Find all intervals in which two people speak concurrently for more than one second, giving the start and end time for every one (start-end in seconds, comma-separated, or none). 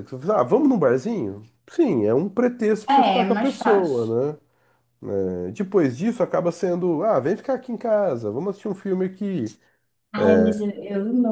2.9-4.1